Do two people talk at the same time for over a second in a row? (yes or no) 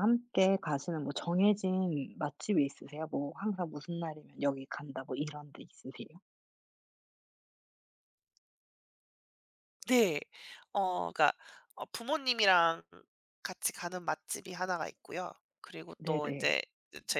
no